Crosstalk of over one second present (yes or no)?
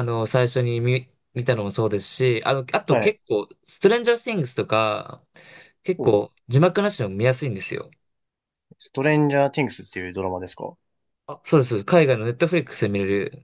no